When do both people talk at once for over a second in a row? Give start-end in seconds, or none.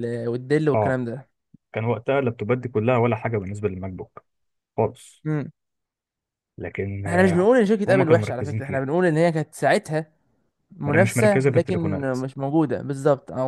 7.0-8.9, 10.8-12.2